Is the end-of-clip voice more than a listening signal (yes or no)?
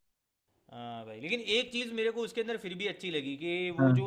no